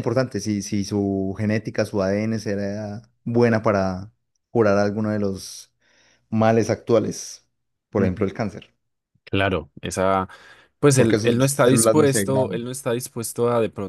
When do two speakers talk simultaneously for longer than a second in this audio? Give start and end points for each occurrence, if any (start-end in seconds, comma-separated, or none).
10.9-12.7